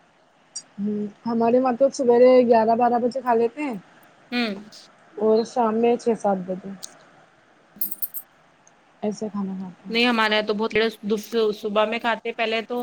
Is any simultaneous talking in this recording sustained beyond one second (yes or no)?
no